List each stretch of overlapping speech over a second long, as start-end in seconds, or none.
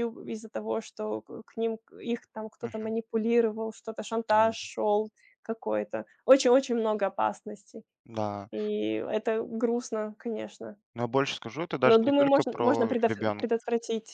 11.8-13.4